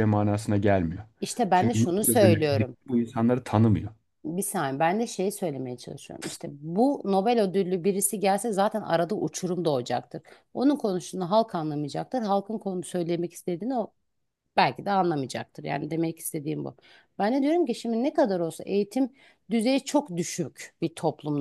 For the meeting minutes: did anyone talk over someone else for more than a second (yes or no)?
yes